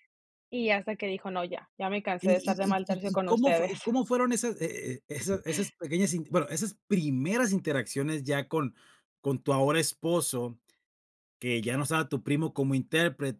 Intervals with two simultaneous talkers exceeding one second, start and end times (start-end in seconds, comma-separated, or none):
2.2-3.9